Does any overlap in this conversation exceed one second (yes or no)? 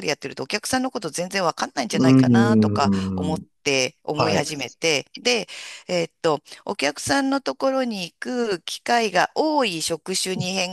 yes